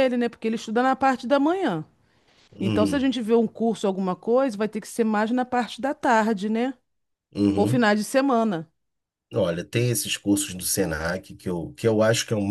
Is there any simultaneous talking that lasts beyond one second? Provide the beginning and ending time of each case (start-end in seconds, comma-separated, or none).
none